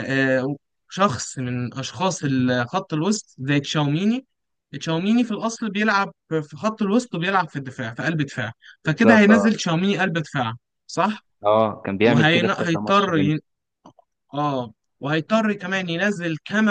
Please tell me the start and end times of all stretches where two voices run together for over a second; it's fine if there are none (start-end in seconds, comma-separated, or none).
12.0-13.3